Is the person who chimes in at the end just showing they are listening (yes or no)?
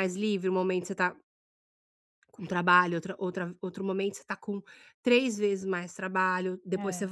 yes